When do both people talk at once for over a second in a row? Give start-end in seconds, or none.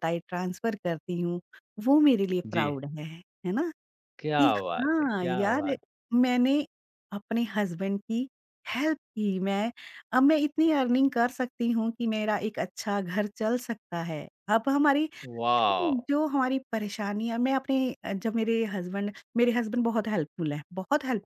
4.4-5.7